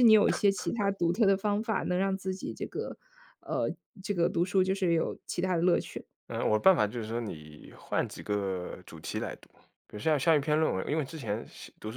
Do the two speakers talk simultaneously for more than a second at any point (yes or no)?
no